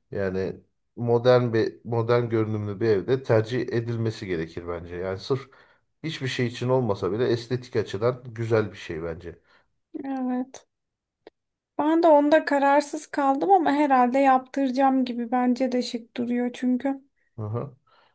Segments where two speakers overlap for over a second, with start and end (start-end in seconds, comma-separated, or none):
none